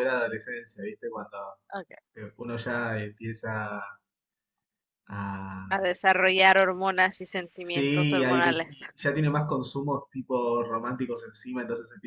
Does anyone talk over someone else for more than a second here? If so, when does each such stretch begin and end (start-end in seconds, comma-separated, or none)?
7.6-8.9